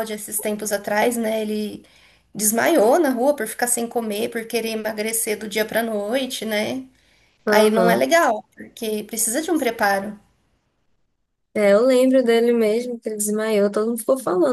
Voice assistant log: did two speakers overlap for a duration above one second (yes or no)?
no